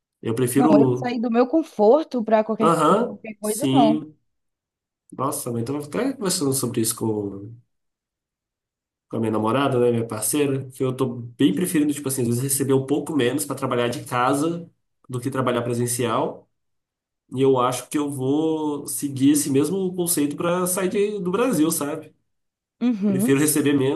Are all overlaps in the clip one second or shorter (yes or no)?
no